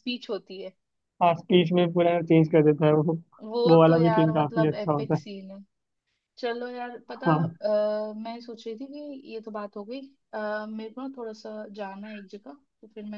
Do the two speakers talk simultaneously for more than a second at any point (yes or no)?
yes